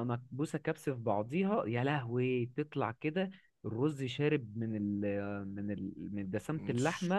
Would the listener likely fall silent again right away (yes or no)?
no